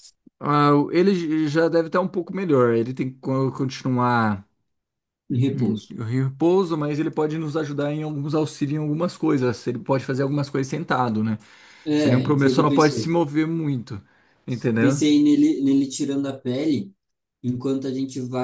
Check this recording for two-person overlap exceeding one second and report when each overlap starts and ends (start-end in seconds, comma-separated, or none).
11.9-13.2